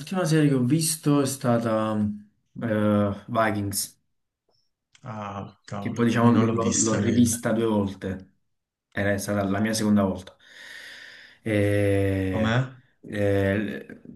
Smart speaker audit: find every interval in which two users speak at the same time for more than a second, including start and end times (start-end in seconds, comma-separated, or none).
5.8-7.4